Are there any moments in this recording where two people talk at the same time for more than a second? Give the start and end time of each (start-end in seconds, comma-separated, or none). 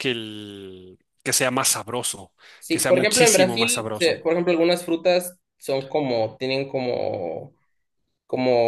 2.7-4.2